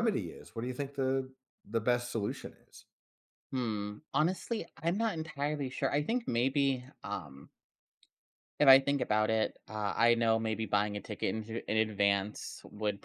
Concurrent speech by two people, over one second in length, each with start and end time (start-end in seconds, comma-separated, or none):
none